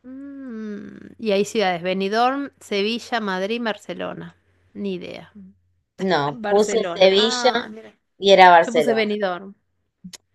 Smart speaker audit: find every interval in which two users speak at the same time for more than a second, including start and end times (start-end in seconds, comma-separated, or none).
6.3-7.7